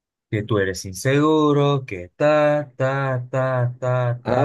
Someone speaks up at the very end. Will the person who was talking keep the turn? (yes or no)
no